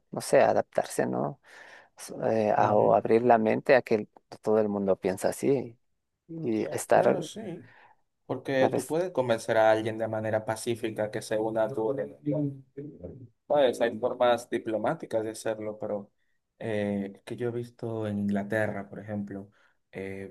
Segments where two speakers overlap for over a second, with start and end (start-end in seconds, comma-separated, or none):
none